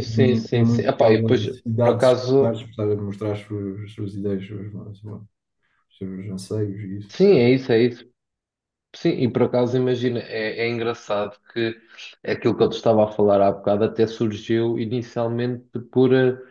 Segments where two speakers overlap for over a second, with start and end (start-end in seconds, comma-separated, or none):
0.5-2.6